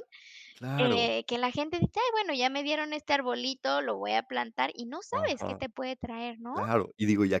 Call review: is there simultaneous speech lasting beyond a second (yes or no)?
no